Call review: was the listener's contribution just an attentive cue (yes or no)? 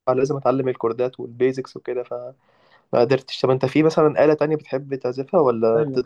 no